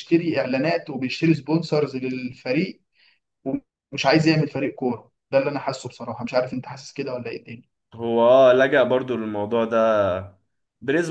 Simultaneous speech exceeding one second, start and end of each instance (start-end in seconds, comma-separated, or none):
none